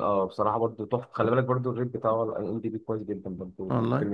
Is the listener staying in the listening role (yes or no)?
no